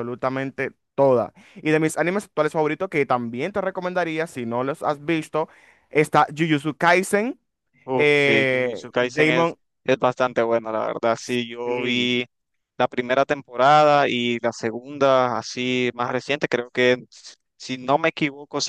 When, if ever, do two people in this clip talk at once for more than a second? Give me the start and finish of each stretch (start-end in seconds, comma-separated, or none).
7.9-9.6